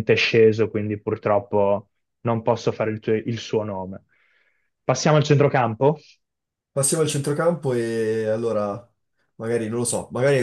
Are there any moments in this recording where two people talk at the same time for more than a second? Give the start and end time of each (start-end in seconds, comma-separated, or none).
none